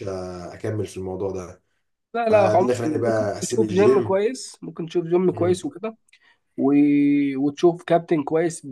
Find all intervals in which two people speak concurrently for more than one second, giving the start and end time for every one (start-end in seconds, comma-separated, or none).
2.3-4.2